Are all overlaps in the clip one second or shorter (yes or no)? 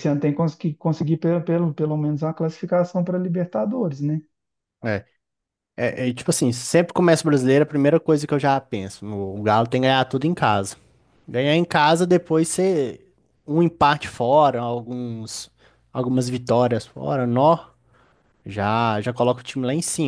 yes